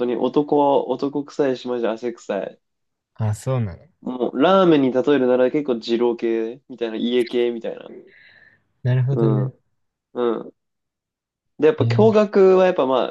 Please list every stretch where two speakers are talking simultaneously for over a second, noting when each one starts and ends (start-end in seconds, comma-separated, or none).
none